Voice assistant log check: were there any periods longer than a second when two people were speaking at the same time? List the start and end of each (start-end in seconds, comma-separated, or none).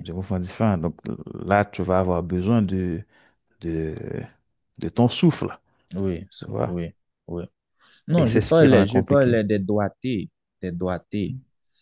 8.2-9.4